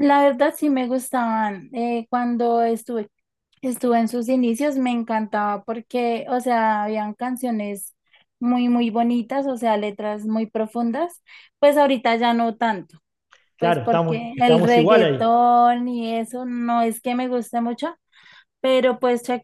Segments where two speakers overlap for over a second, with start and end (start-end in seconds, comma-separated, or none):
13.6-15.2